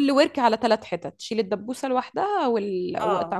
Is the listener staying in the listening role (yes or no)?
no